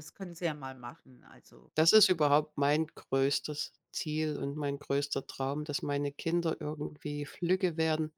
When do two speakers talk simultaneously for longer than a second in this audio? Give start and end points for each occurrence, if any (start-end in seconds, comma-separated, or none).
none